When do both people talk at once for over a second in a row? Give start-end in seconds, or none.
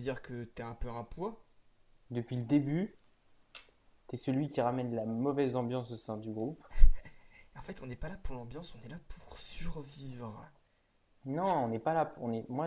none